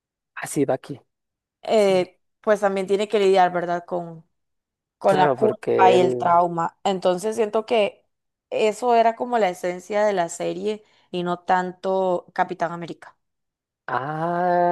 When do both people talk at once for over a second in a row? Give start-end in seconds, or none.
5.0-6.4